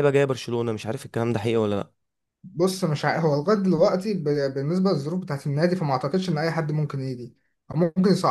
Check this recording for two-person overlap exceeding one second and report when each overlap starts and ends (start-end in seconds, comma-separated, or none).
none